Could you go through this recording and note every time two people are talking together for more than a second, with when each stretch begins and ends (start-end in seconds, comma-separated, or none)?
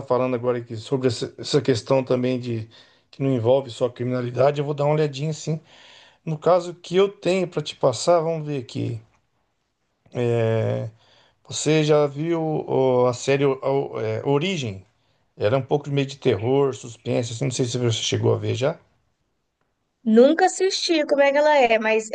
none